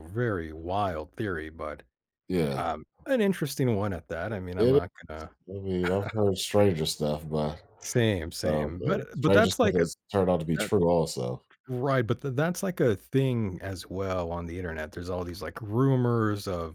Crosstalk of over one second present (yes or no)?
yes